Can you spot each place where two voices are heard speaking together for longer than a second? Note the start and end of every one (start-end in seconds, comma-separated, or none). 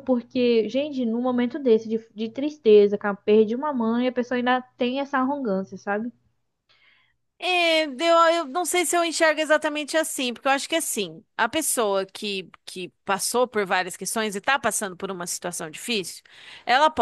none